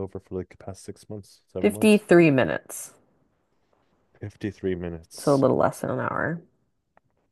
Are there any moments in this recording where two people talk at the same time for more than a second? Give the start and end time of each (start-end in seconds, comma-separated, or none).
none